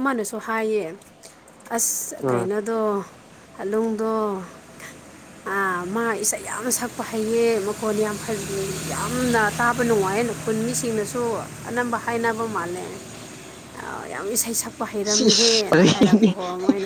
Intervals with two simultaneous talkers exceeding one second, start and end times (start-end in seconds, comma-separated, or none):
15.0-16.3